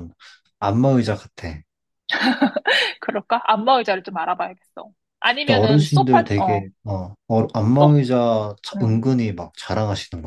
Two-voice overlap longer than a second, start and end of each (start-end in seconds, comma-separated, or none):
5.4-6.6